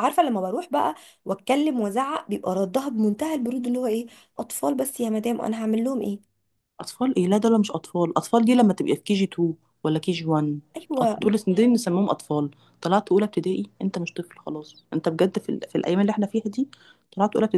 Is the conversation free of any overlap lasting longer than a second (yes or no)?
yes